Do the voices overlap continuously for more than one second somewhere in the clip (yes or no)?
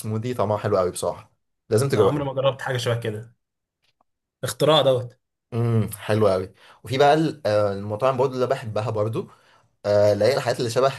no